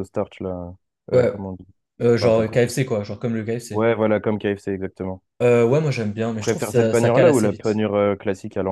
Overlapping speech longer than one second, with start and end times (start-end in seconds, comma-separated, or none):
6.3-7.8